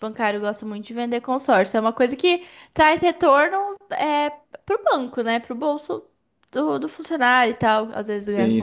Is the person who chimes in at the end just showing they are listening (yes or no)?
no